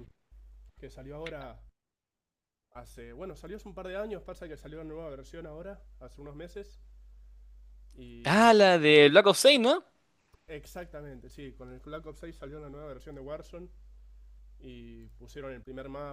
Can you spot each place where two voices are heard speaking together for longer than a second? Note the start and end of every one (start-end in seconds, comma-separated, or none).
none